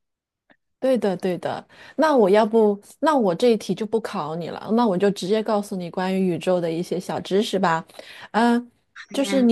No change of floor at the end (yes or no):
yes